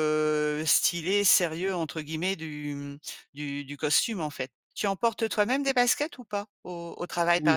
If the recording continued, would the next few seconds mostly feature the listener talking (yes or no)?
yes